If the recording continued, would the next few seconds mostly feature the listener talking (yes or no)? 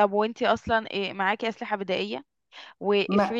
no